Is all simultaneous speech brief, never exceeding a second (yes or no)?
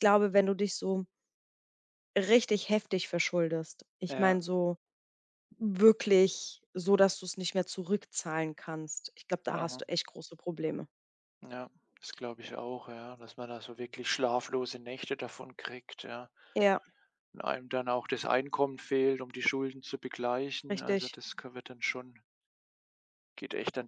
yes